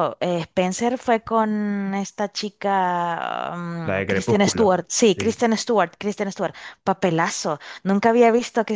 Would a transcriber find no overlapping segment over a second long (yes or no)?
no